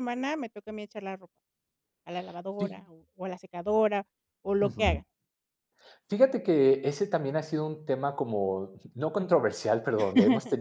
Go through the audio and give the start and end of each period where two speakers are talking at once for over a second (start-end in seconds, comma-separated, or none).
none